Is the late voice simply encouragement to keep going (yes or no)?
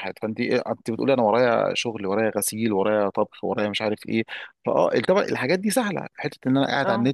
yes